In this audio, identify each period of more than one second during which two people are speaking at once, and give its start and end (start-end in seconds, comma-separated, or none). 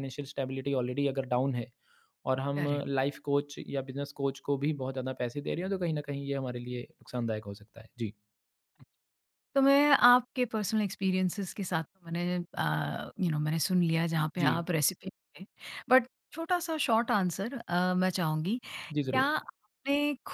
none